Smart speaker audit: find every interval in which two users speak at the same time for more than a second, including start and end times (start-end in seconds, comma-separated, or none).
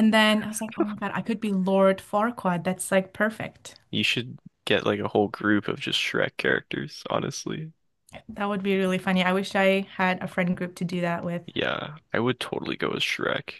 none